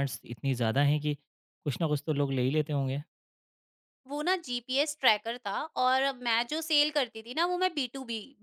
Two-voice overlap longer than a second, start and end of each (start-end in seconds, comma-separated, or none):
none